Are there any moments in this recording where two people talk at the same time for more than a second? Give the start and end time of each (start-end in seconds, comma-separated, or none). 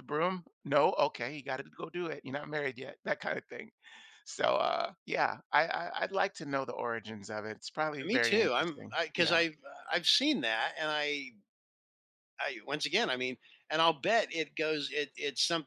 8.0-9.4